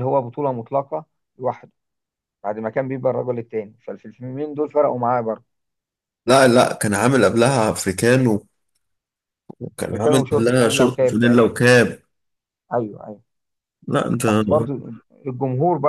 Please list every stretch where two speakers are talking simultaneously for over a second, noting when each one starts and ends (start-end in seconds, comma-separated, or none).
9.8-11.6